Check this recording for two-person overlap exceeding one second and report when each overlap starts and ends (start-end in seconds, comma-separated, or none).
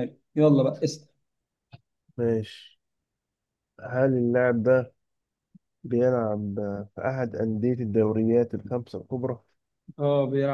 none